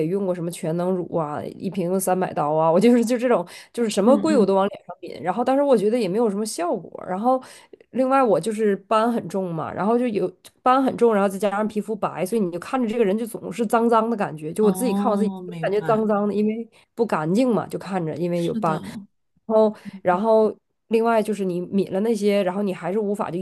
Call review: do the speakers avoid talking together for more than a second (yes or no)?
no